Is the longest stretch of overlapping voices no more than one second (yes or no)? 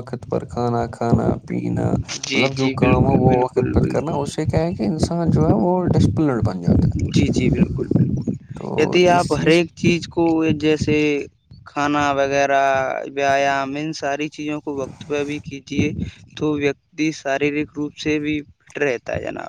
no